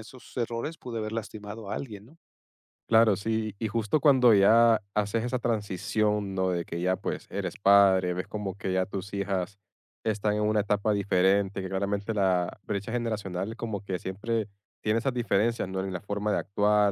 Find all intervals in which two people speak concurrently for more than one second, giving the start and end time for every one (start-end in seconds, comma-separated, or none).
none